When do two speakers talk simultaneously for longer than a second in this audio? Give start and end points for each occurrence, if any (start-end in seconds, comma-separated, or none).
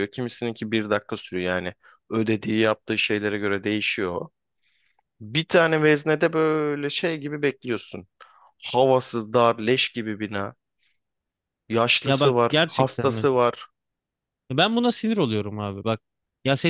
12.0-13.3